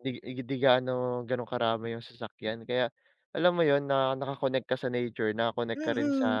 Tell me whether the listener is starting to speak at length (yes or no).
yes